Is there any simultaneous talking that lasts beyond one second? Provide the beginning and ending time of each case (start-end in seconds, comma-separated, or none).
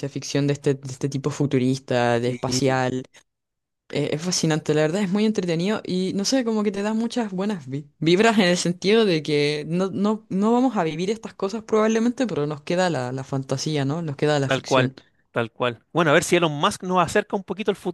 none